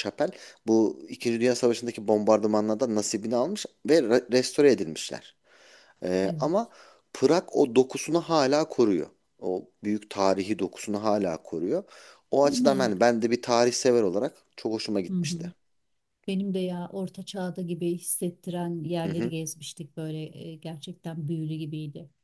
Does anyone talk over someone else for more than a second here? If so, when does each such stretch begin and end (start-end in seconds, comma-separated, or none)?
none